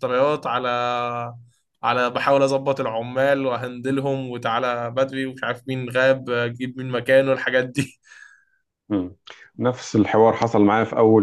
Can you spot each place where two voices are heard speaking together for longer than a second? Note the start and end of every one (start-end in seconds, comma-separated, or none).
none